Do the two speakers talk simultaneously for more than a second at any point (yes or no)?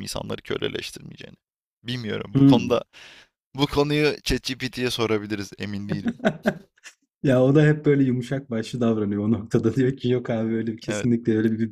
no